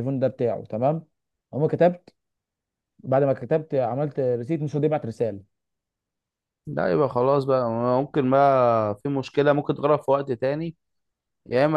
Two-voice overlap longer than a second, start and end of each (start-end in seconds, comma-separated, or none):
none